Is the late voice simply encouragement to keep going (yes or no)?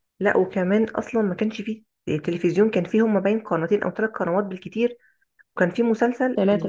no